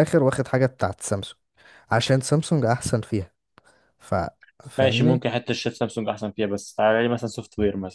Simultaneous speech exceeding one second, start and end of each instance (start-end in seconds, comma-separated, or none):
none